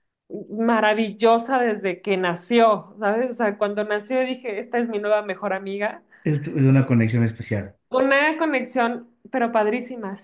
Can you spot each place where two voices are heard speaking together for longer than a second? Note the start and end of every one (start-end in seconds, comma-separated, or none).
none